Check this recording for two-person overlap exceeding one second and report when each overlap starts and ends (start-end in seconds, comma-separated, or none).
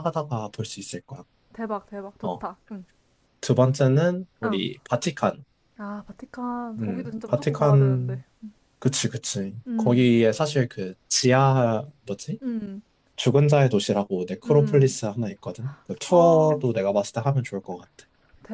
6.8-8.2